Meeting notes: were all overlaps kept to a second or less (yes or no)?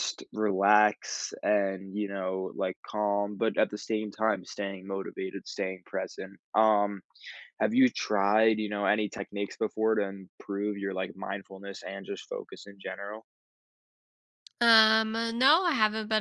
yes